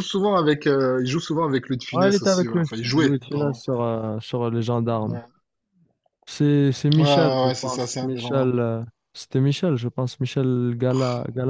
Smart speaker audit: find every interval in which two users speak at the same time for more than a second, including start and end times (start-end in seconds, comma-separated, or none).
1.9-3.6, 7.0-8.5